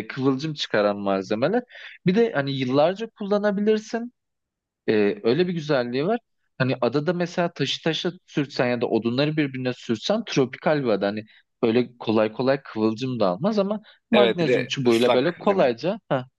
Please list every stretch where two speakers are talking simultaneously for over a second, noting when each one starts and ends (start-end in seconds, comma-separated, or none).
14.1-15.8